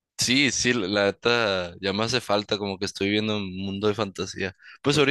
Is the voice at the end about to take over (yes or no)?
no